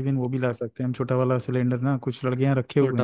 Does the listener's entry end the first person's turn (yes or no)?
no